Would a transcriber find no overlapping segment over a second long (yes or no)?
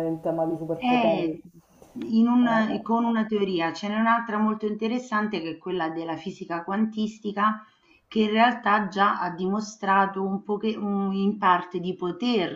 yes